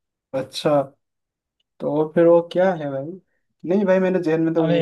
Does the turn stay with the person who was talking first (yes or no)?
yes